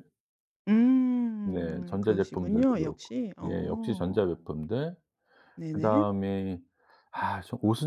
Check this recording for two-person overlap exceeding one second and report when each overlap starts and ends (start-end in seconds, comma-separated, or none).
1.4-4.4